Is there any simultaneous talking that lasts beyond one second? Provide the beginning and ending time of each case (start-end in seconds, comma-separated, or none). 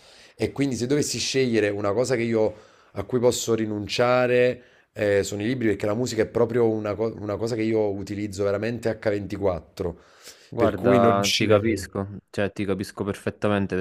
10.6-11.9